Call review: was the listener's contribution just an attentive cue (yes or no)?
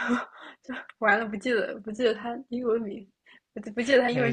no